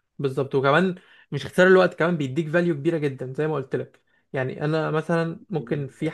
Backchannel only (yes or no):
yes